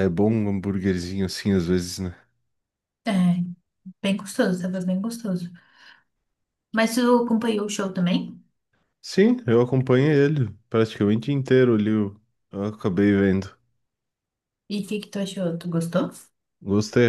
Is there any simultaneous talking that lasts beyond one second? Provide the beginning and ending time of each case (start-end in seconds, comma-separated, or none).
none